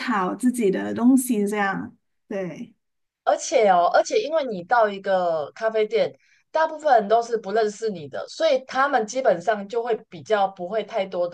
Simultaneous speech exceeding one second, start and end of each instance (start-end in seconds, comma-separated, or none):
none